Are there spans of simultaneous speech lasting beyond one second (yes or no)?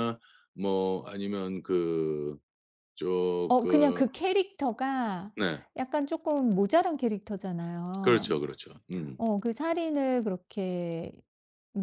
no